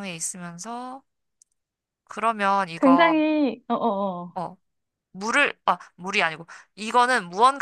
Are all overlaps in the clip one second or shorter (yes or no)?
yes